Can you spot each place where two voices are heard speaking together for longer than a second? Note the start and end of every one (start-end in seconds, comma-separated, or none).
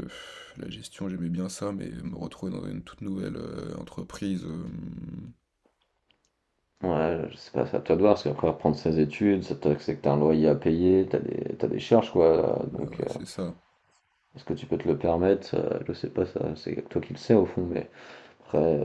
none